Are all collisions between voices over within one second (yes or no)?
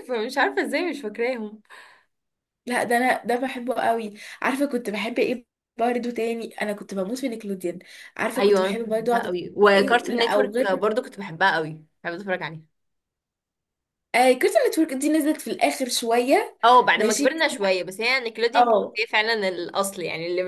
no